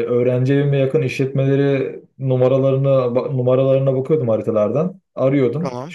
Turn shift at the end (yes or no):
no